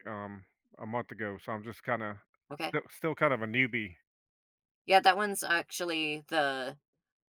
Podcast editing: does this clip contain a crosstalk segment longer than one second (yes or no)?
no